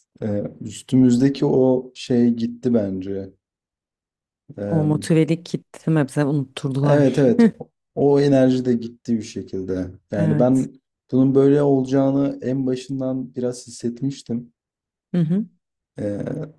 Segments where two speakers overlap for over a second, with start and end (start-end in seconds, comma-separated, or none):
none